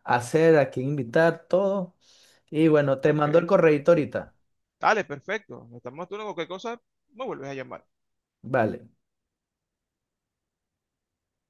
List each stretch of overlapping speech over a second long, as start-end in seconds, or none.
none